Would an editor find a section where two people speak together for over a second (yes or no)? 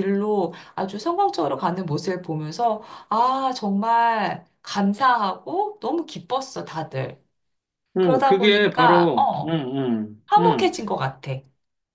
yes